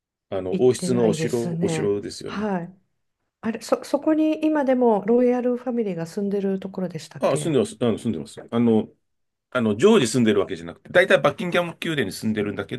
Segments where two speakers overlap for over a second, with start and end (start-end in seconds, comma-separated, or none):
0.5-2.5